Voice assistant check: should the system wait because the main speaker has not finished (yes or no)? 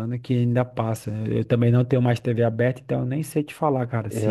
no